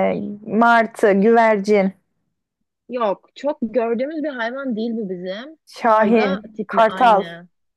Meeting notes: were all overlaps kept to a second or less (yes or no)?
no